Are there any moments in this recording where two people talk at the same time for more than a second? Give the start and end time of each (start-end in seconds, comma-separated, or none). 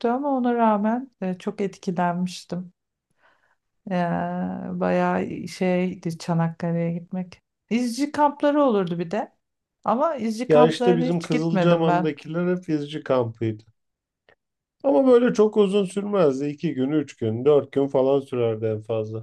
10.5-12.1